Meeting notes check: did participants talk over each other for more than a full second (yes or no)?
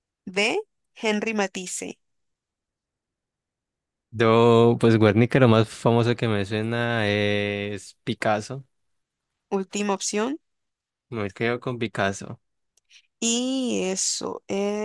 no